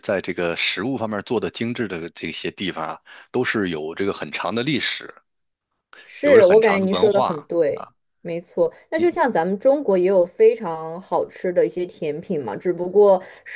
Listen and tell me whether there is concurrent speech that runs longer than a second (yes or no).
yes